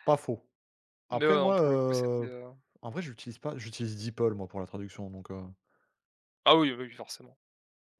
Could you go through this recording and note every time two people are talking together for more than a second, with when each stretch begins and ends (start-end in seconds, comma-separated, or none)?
1.1-2.3